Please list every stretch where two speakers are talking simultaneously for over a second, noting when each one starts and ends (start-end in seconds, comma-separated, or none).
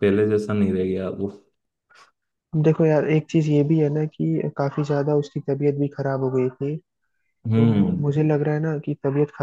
none